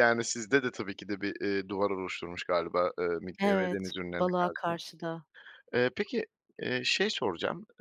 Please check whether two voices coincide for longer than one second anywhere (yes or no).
yes